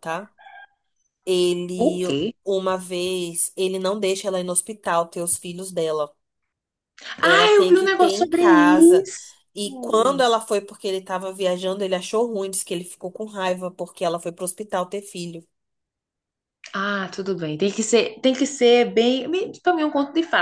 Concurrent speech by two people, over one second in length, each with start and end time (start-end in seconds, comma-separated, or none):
7.2-9.1